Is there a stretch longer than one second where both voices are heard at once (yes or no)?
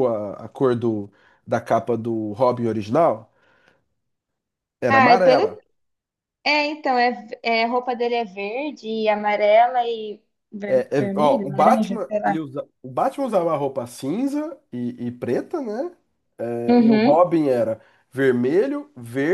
yes